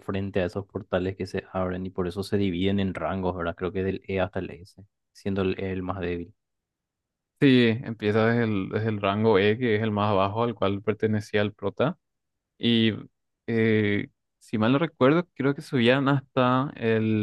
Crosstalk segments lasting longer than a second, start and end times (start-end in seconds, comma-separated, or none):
none